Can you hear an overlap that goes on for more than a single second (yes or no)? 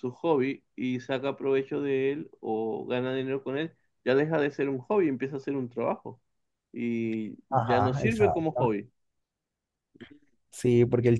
yes